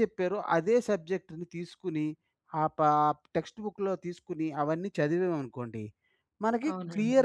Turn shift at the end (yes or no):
no